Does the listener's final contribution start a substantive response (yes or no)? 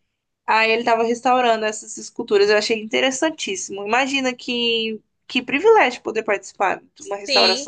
yes